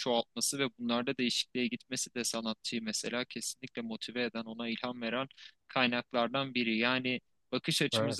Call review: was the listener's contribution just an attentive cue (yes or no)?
yes